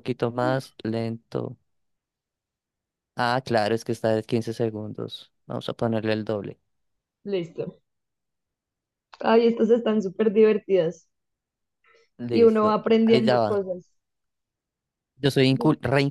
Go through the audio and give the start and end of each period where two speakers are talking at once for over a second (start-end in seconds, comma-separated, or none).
12.3-13.6